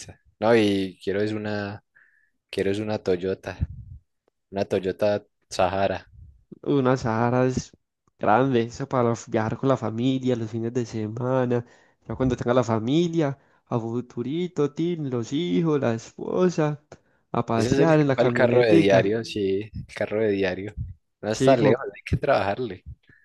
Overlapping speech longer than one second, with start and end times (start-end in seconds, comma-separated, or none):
17.5-19.2